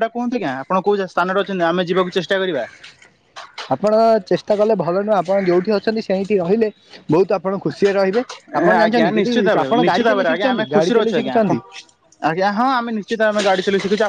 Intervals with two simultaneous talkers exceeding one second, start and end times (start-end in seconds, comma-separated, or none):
8.8-10.9